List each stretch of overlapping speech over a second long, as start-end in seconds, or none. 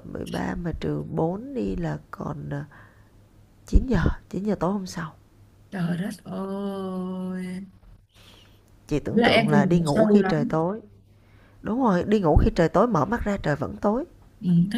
9.1-10.6